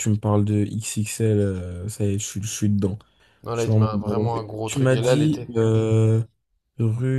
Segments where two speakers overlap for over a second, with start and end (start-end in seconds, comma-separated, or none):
3.5-5.5